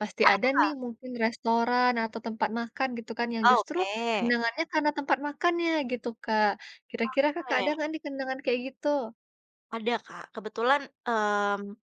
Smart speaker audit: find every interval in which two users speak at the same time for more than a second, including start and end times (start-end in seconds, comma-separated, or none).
none